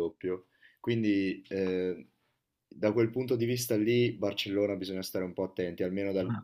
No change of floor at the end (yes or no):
yes